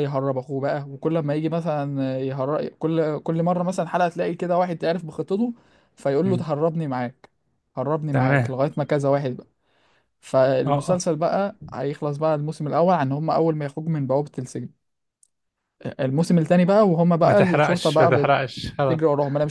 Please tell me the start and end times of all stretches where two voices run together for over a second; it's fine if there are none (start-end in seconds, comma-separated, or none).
17.2-18.6